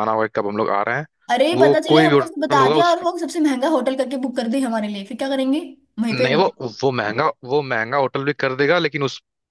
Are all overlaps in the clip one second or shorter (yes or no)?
no